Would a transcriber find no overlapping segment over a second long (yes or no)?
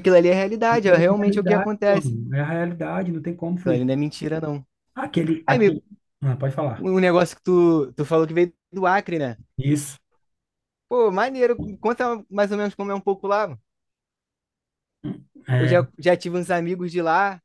no